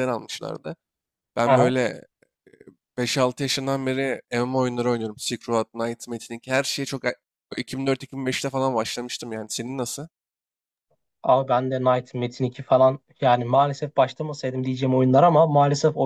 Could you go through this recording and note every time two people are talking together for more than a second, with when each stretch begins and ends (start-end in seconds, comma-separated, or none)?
none